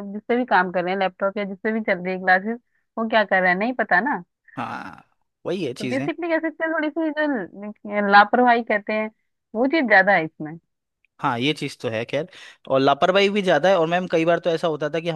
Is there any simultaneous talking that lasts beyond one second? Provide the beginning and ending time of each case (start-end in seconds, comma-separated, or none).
none